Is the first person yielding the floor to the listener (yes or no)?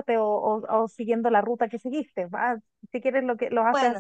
no